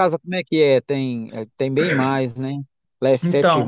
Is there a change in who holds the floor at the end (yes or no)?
yes